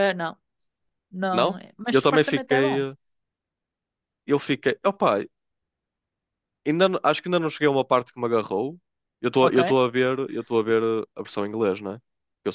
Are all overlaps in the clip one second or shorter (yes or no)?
no